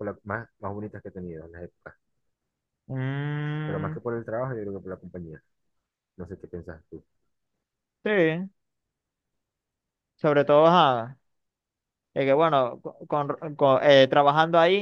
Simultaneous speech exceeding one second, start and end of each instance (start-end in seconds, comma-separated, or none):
none